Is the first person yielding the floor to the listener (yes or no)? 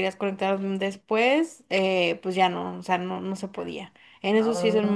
no